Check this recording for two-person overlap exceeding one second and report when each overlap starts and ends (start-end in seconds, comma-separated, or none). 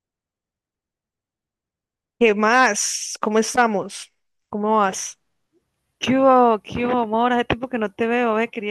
none